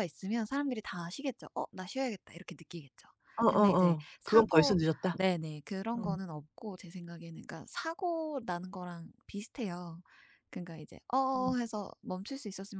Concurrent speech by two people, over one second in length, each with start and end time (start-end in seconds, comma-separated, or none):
3.5-5.2